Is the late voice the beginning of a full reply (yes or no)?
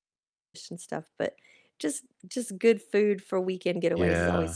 yes